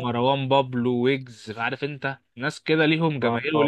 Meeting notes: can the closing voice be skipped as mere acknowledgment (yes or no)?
yes